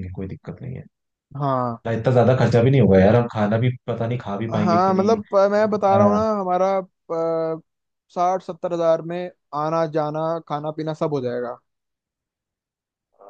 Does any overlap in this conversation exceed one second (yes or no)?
yes